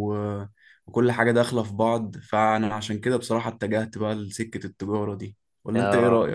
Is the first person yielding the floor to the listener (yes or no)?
yes